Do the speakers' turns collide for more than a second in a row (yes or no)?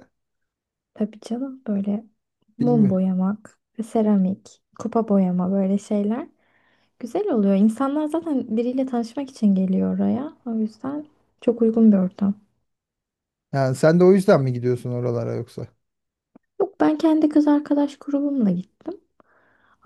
no